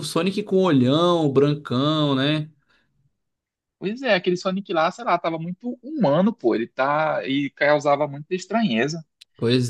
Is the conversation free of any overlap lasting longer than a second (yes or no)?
yes